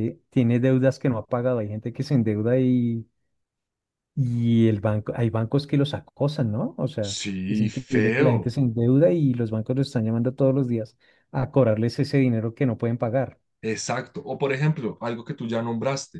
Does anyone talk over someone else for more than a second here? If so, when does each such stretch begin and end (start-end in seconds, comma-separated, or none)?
7.1-8.5